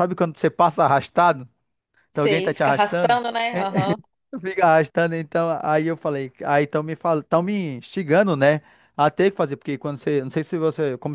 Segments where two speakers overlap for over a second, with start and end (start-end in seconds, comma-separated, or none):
2.1-3.9